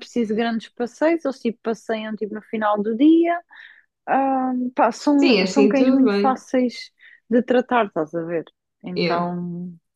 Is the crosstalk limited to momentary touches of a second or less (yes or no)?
no